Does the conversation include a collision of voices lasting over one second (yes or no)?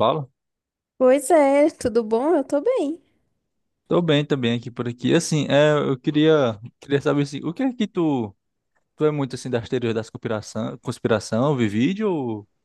no